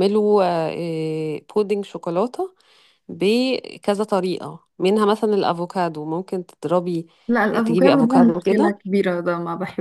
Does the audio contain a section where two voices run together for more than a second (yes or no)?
yes